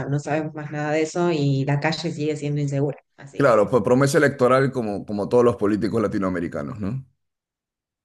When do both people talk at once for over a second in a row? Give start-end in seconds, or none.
none